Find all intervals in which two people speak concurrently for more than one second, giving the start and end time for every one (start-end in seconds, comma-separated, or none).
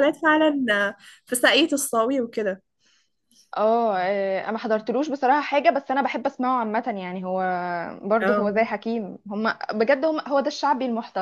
none